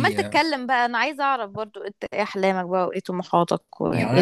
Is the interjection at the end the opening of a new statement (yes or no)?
yes